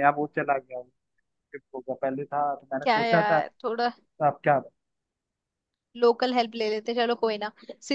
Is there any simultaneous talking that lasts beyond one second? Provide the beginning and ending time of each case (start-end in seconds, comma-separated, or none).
none